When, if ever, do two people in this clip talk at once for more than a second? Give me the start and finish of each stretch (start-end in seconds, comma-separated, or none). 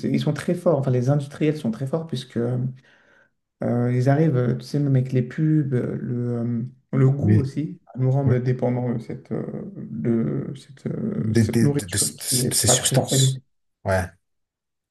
11.2-13.4